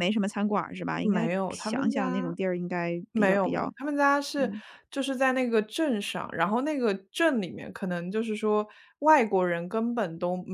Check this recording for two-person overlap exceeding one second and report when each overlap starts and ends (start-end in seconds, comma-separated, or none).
1.0-2.3